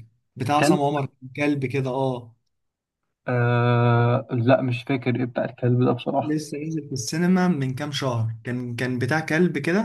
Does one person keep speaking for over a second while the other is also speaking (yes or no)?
no